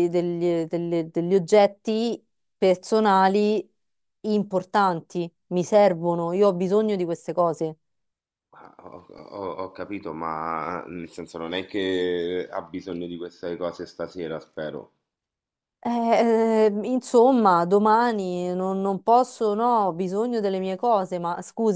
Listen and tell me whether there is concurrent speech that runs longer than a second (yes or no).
no